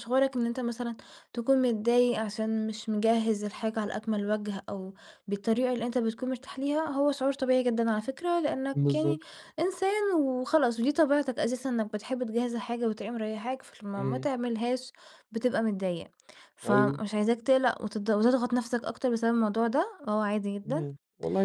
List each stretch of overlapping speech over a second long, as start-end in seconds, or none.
none